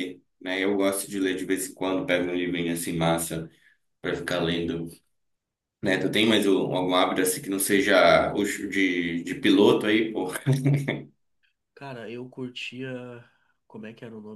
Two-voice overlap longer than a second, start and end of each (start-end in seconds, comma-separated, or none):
none